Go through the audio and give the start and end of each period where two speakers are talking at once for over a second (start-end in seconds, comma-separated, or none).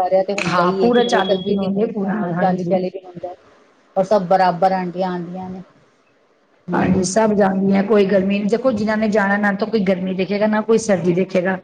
0.5-2.8